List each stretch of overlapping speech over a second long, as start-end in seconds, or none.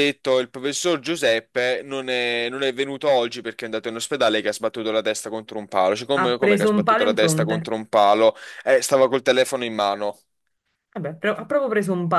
6.1-7.7